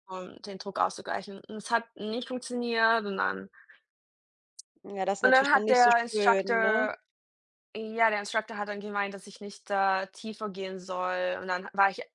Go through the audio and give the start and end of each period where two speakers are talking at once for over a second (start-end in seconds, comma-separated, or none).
5.2-6.8